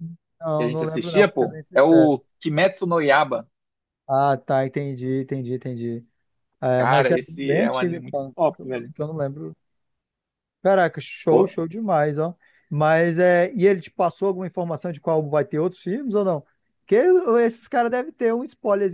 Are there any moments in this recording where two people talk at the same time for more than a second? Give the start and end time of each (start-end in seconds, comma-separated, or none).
0.6-2.2, 6.8-8.9